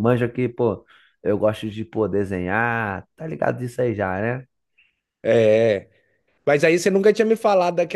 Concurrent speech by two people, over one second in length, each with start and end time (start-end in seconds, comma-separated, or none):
none